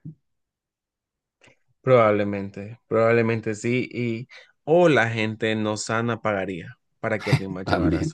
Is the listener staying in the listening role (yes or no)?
yes